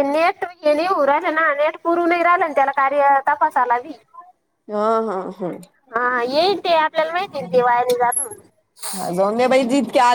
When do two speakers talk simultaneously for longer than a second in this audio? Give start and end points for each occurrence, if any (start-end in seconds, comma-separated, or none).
none